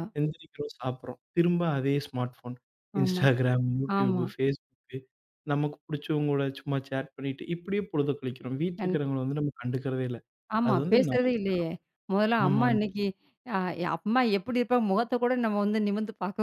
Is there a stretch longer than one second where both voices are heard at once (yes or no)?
no